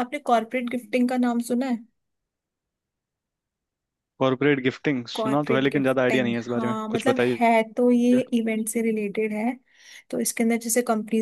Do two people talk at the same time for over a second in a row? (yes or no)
yes